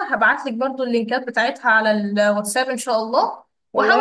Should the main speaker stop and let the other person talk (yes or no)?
yes